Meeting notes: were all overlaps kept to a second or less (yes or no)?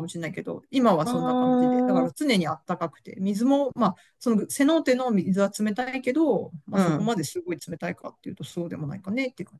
no